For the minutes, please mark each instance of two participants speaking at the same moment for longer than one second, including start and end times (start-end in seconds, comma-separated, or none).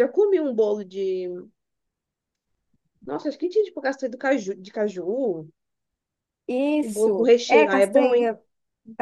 6.8-8.3